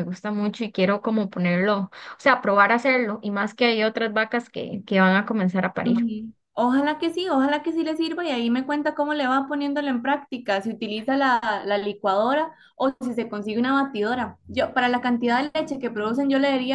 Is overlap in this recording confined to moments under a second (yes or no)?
yes